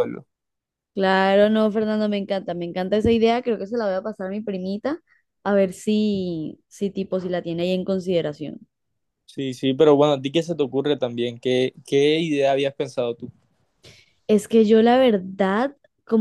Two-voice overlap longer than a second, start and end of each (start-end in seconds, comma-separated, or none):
none